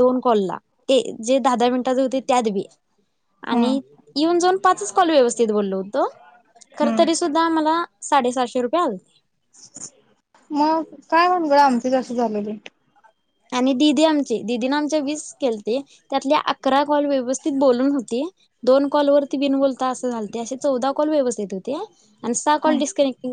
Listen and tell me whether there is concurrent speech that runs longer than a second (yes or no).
no